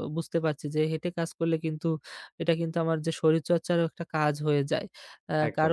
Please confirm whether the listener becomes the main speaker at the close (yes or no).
no